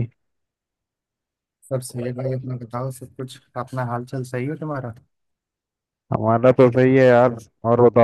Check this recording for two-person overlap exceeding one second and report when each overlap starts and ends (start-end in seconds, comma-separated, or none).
none